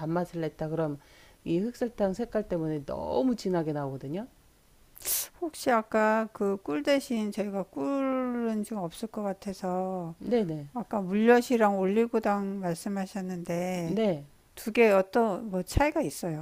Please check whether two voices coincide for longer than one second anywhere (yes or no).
no